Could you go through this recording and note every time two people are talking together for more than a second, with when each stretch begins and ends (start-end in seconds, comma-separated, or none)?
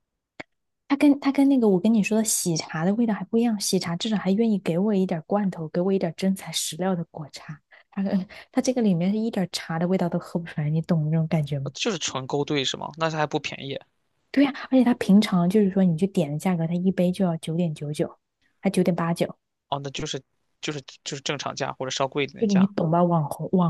none